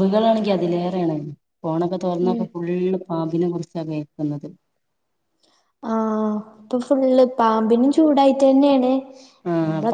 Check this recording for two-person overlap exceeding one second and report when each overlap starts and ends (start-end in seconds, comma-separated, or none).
none